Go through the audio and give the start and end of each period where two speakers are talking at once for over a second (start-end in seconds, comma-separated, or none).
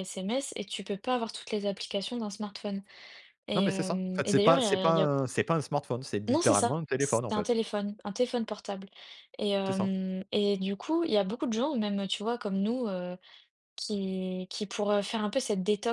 3.5-5.1, 6.3-7.5